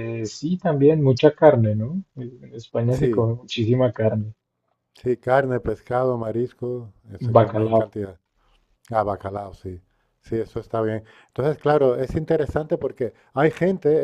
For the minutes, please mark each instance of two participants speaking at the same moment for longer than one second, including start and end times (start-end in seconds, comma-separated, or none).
none